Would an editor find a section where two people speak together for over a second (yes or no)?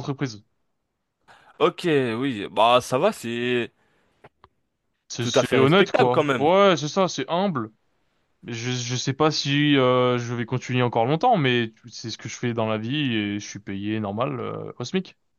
yes